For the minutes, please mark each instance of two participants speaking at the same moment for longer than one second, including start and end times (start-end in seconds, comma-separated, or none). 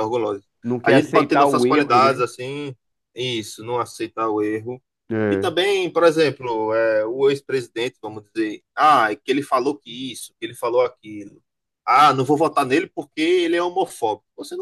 0.8-2.3